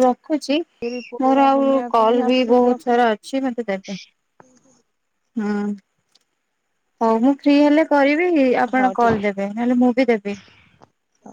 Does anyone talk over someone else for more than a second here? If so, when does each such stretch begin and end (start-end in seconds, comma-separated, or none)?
1.2-3.0